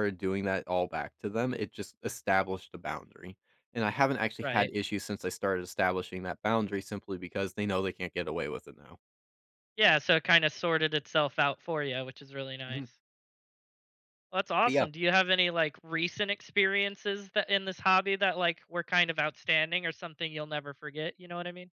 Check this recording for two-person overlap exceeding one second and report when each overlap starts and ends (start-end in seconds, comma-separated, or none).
none